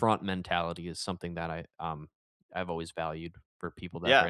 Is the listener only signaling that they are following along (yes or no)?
no